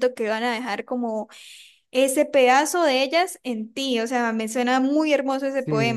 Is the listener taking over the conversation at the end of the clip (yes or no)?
yes